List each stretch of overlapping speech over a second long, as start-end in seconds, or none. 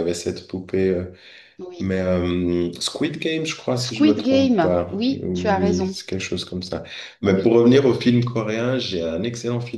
3.8-6.0